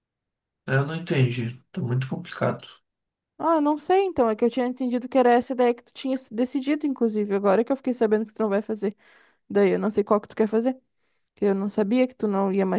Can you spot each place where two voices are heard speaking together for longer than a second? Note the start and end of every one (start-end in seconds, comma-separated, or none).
none